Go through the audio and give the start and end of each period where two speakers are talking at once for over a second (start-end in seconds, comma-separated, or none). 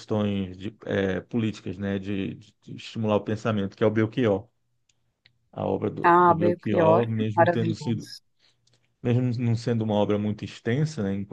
6.0-8.1